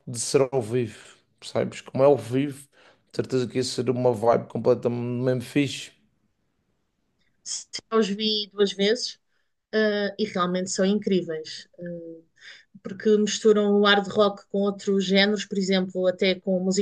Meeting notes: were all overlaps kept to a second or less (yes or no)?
yes